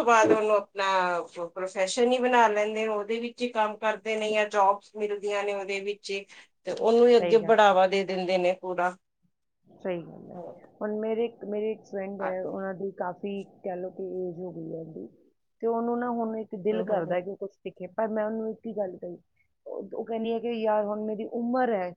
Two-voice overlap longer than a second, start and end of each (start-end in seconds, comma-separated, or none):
none